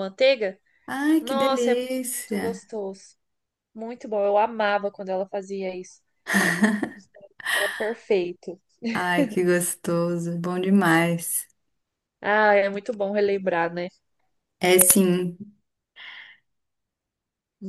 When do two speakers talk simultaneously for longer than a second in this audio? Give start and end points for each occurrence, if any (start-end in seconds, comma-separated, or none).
1.2-2.4